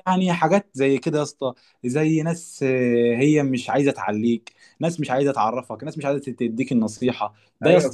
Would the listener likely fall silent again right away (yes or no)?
no